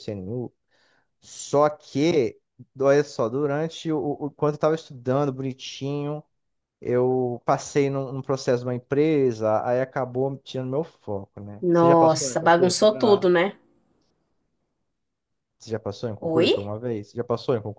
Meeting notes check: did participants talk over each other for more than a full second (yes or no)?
yes